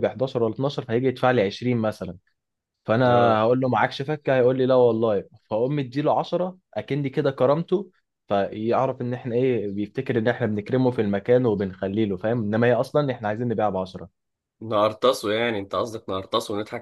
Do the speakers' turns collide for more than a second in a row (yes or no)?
no